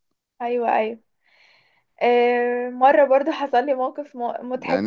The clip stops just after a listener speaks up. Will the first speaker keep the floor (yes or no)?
no